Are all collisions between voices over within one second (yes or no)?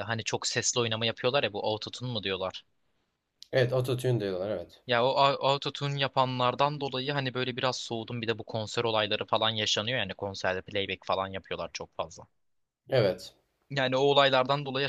yes